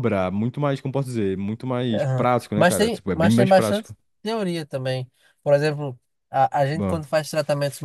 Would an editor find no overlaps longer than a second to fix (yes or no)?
no